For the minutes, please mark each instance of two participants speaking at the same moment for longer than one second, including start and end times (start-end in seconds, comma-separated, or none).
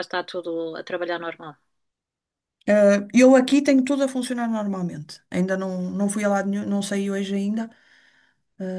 none